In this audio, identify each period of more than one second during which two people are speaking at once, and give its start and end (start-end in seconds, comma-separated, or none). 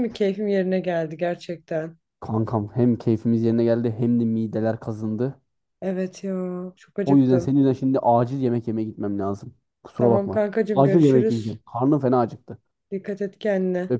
10.0-11.6